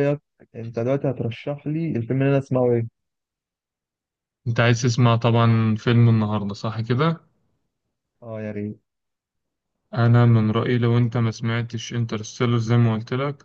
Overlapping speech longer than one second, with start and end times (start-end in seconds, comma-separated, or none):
none